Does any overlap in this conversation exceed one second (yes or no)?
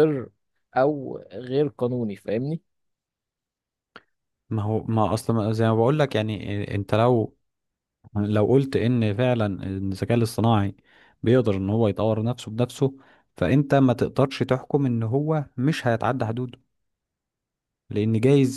no